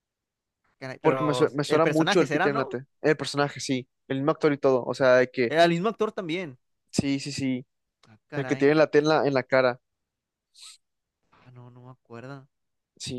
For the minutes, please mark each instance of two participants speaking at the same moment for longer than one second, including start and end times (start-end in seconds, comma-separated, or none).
1.0-2.8